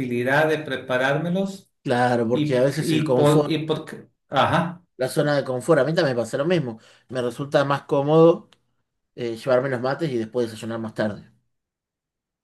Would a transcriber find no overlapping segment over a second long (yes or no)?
no